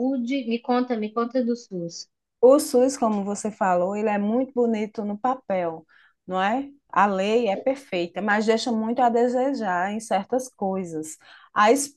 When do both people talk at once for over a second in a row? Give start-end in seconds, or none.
none